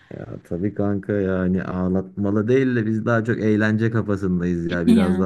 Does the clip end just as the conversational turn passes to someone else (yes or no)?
no